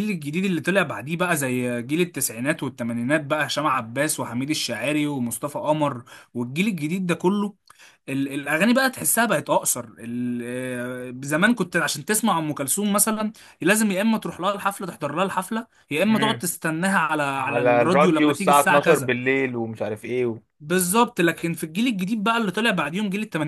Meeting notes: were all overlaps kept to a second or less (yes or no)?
no